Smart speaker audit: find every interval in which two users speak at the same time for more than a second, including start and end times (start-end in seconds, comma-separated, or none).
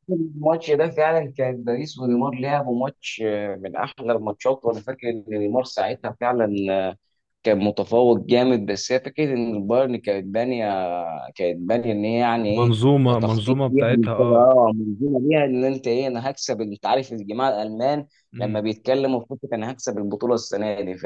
12.6-14.5